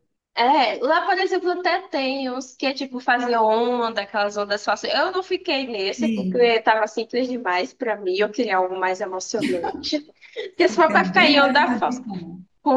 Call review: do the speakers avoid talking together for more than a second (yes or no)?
no